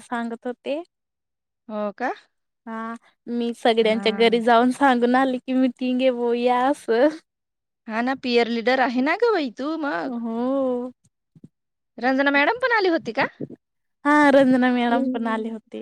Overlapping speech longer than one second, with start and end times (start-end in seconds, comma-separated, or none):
none